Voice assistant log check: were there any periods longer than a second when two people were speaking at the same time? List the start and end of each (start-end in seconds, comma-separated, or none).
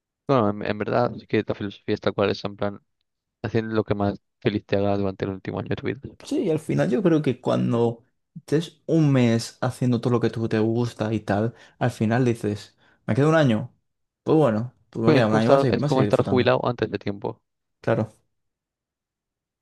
15.1-16.6